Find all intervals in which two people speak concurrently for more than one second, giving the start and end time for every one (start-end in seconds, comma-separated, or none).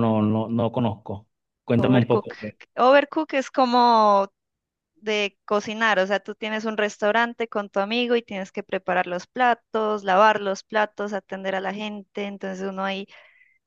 none